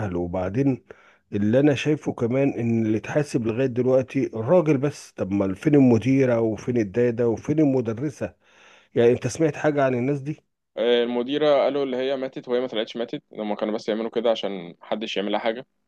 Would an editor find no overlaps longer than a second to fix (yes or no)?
yes